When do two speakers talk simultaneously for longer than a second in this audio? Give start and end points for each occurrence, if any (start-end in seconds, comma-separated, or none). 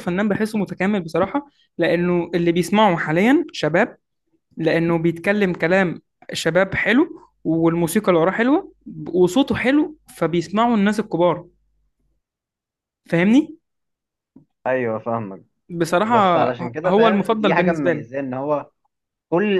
16.9-18.1